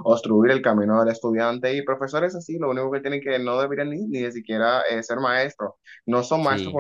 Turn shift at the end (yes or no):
no